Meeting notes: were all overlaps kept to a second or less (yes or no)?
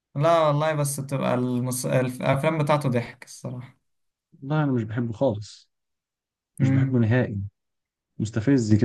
yes